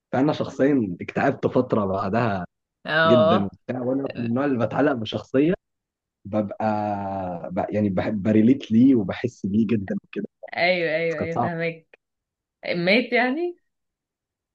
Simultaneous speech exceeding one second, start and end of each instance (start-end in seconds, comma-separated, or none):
none